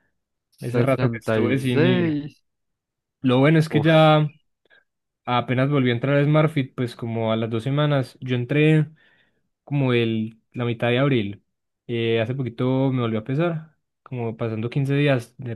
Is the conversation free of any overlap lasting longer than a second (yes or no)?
no